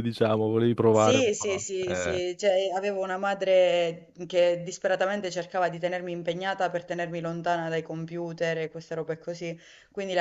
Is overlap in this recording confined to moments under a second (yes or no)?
no